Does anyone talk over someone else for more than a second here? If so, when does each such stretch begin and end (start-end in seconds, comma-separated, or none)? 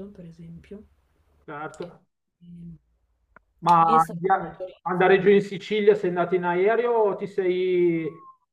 3.8-5.4